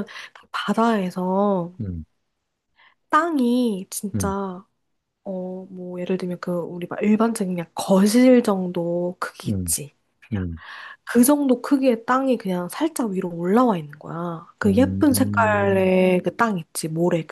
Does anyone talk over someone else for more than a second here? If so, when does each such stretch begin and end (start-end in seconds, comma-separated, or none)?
14.7-15.9